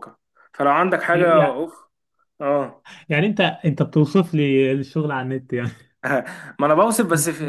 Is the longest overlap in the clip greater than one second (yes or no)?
no